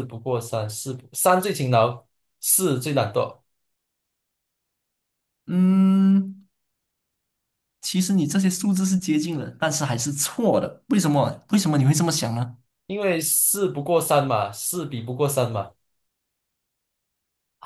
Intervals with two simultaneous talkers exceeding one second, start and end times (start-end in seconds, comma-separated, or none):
none